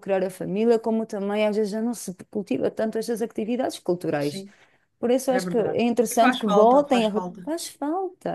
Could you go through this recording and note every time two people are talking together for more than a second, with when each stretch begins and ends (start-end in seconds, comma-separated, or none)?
5.3-7.5